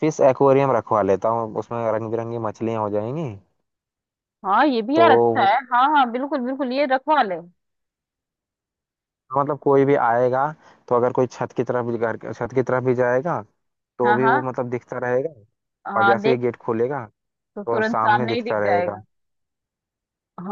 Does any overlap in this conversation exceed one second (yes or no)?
yes